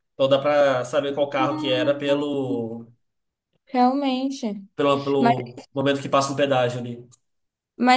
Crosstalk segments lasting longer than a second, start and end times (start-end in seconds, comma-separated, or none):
1.2-2.6